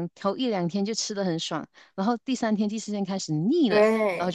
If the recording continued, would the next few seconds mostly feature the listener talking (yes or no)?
yes